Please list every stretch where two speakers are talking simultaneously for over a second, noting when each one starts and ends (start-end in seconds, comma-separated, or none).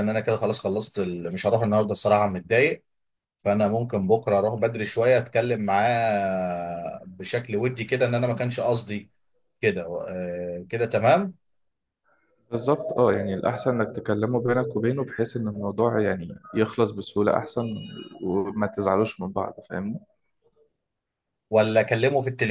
none